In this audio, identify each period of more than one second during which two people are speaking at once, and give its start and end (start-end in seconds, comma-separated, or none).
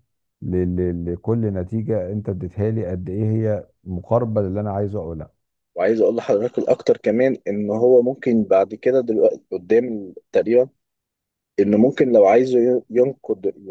none